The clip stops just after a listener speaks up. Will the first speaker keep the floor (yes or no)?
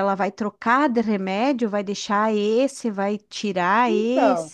no